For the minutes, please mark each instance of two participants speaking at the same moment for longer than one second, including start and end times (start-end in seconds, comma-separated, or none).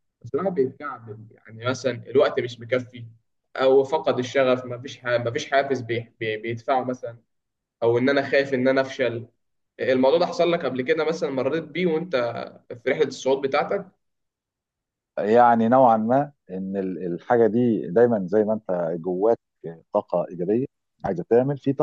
none